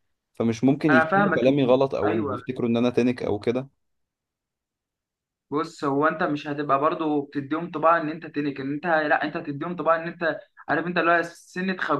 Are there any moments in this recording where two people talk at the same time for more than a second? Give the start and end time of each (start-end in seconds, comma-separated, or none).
0.9-2.4